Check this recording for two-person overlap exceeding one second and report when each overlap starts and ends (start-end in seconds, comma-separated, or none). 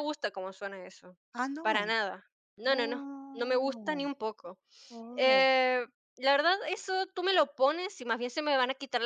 2.7-4.0